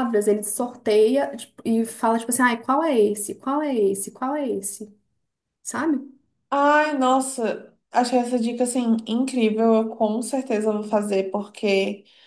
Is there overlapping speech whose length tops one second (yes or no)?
no